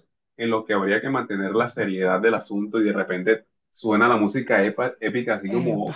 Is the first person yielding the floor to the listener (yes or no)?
no